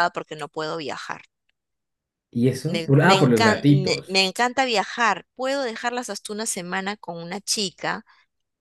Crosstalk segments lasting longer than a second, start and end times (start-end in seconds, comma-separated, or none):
2.6-4.2